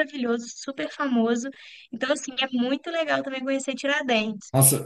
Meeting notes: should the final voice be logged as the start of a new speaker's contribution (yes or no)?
yes